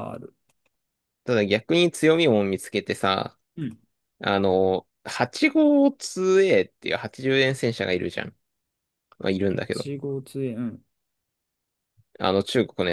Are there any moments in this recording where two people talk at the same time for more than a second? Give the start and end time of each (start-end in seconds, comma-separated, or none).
none